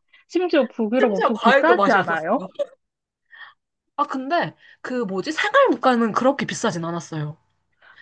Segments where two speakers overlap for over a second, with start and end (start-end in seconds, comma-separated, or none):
1.0-2.5